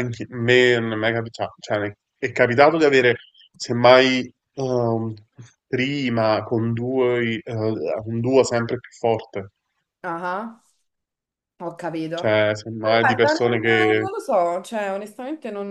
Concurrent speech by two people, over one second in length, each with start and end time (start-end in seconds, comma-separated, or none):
12.8-14.1